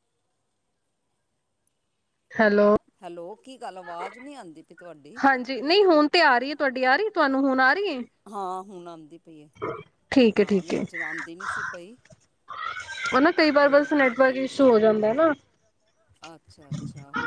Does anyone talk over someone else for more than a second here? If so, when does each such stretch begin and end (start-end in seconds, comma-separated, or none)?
none